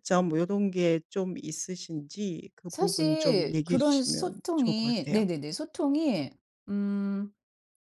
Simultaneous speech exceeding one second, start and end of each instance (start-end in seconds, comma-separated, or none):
2.7-5.3